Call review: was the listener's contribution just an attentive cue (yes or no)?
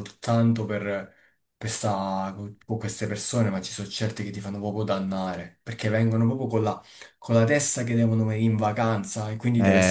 no